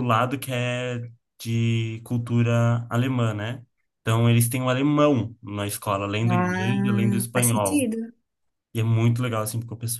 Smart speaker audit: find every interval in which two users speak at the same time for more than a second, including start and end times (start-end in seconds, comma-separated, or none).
6.3-7.9